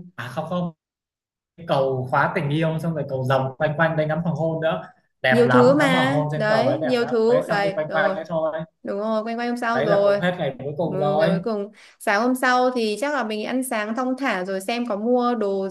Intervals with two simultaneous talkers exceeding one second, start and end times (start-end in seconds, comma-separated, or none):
5.3-8.2